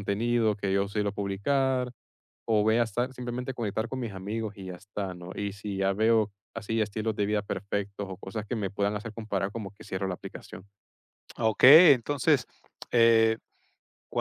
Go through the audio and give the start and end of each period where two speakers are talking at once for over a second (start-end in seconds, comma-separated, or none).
none